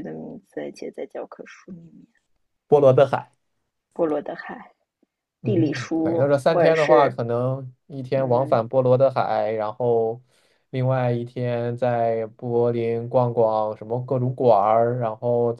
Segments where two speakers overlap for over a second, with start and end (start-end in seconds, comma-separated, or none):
5.4-7.2